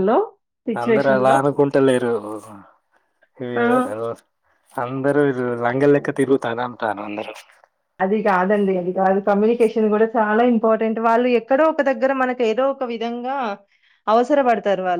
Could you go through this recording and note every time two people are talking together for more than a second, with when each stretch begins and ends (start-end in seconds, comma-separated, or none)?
none